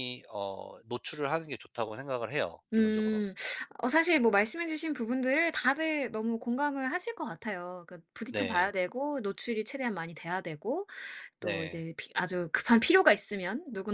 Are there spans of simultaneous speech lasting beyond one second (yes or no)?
no